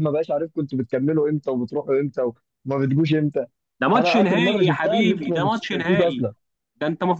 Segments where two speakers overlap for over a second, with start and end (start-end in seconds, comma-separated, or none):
3.9-6.3